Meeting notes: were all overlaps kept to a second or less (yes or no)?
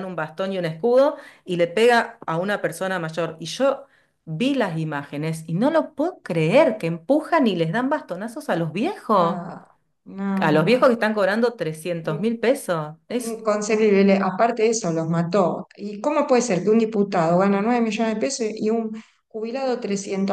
yes